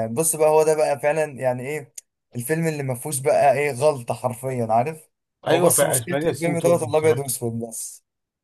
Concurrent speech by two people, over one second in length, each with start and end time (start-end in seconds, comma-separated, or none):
5.5-7.2